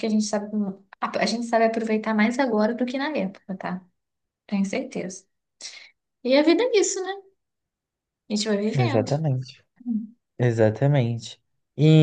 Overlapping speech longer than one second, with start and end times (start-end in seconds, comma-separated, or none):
none